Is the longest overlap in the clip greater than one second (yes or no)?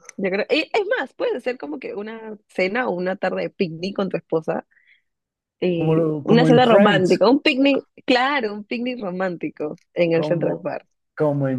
yes